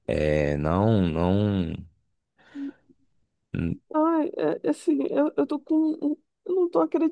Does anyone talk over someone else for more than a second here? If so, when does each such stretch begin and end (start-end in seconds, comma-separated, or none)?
none